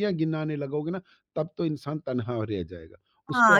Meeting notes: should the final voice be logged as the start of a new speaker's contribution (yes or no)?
yes